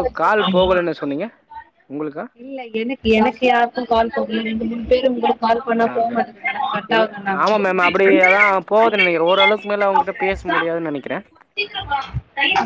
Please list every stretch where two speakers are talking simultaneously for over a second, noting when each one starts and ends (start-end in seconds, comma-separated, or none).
none